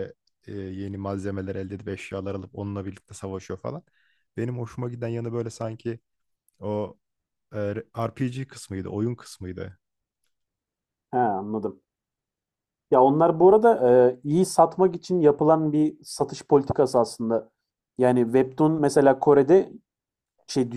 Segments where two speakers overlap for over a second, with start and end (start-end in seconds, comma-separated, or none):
none